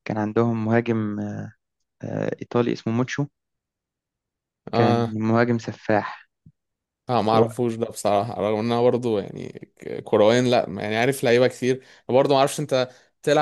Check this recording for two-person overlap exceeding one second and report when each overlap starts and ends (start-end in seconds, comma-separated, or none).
none